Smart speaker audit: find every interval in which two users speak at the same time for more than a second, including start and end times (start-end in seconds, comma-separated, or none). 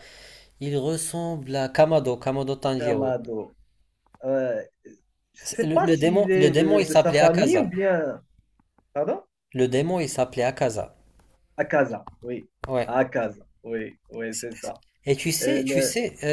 5.4-7.7